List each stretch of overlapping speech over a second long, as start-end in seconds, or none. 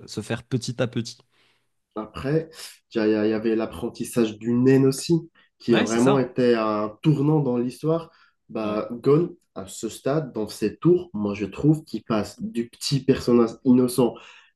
none